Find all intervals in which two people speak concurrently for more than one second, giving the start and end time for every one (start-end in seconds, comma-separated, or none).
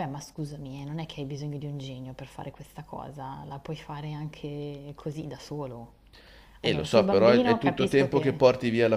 6.6-8.4